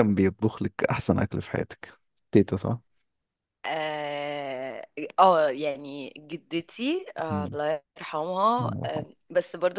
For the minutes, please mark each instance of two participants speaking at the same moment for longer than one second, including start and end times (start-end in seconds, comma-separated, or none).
none